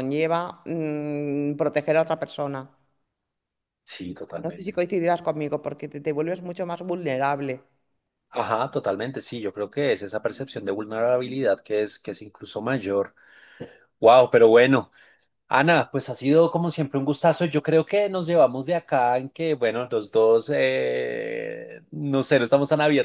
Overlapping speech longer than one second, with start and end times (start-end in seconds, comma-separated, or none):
none